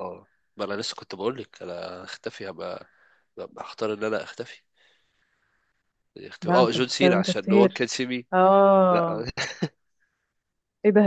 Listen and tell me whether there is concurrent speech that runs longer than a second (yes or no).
yes